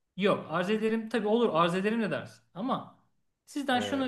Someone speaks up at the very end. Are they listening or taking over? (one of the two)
listening